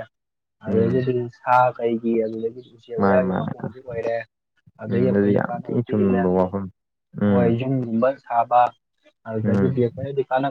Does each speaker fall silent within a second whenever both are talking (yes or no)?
no